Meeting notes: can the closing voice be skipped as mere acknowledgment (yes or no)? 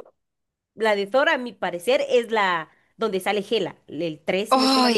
no